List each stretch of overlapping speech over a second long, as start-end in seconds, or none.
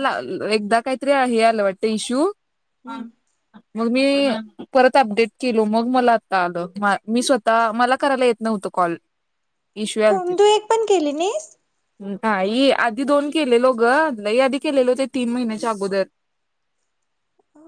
none